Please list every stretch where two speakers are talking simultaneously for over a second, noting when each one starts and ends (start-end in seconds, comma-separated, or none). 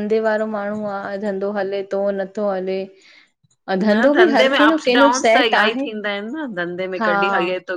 3.8-5.8